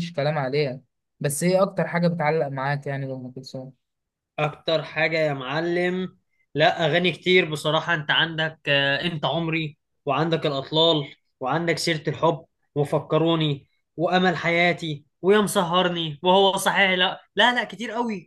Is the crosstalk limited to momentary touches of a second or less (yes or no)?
yes